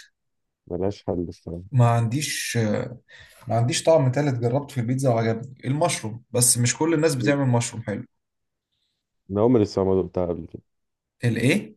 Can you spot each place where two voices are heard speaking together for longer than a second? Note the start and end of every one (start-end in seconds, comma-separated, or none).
none